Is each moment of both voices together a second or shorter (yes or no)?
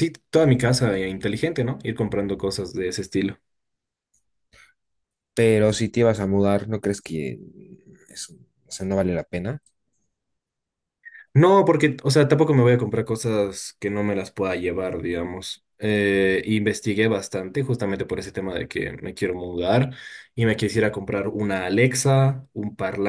yes